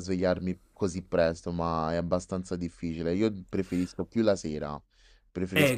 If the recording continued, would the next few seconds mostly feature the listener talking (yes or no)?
yes